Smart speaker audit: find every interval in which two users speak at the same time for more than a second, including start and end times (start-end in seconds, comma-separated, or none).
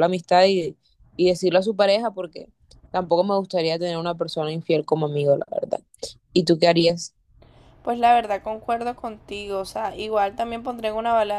none